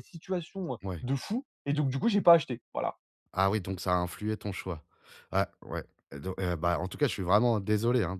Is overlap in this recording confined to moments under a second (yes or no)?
yes